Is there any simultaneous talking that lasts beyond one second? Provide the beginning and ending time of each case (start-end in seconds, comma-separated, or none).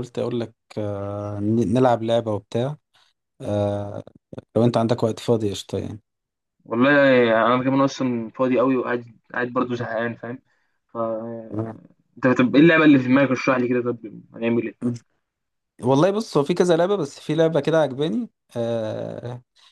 none